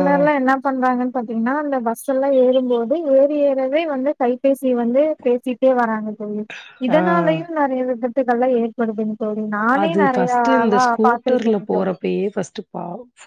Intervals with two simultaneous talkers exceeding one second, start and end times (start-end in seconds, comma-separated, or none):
9.9-11.9